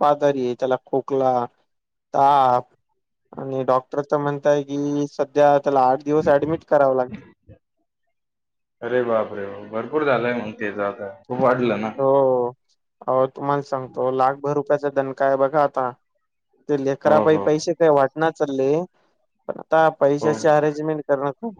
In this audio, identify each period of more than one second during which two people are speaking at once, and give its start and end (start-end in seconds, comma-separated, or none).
none